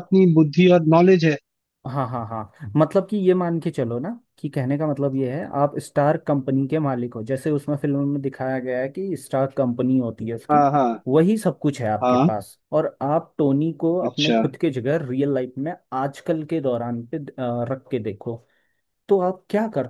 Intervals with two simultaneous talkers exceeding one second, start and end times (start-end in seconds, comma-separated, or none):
none